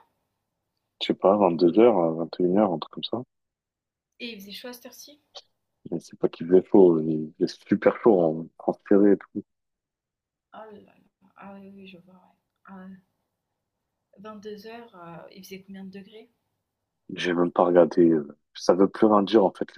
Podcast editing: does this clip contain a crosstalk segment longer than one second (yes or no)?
no